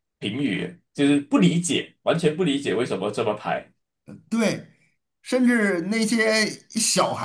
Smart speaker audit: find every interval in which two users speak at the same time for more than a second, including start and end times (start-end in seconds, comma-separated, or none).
none